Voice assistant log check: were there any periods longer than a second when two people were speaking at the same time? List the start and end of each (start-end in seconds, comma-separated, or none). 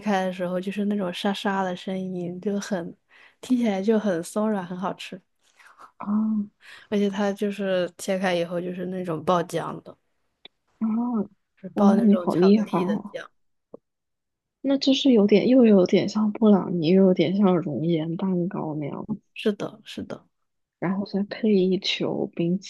11.7-13.2